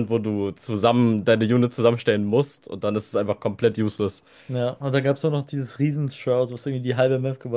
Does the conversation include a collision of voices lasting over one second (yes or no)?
no